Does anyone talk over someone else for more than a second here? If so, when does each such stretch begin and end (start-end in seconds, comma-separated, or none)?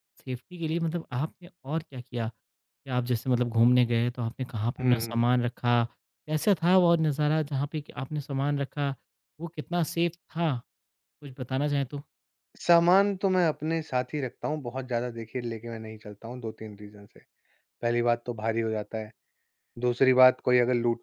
none